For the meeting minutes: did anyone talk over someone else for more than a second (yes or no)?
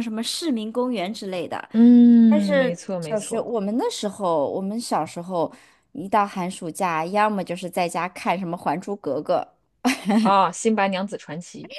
yes